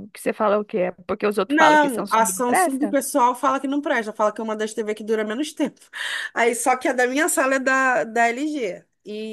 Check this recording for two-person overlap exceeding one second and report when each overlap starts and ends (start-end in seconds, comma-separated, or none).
1.5-3.0